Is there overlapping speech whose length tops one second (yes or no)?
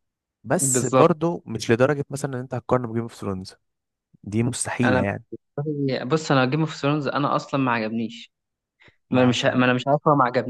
no